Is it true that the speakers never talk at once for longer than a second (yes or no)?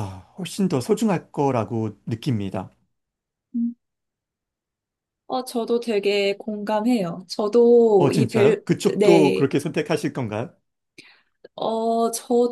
no